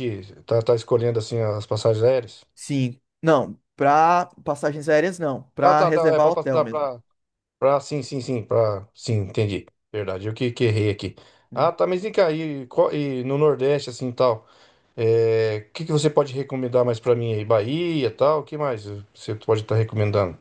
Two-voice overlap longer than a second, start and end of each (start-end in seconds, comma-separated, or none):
5.6-6.9